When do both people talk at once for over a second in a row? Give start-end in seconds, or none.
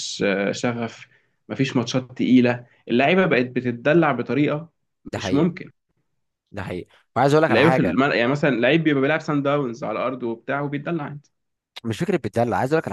none